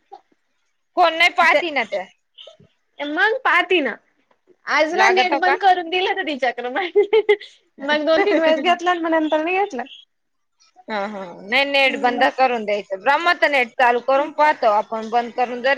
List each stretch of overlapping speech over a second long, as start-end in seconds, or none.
none